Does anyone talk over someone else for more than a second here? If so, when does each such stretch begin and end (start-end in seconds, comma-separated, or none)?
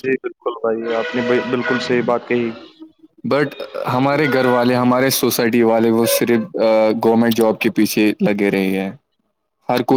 none